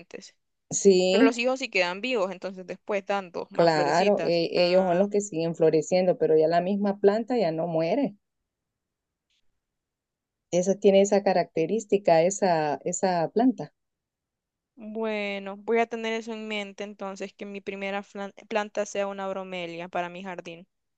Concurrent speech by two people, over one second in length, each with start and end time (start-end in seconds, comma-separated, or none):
3.5-5.1